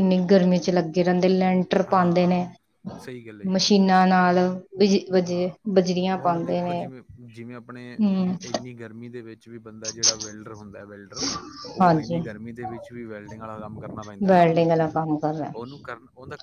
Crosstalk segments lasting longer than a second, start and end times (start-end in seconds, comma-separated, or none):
none